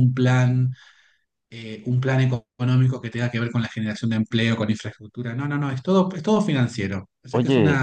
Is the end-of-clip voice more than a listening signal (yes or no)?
no